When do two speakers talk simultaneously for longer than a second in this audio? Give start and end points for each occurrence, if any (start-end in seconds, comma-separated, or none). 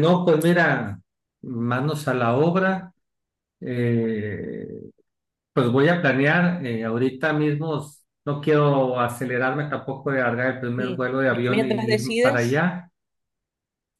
10.8-12.6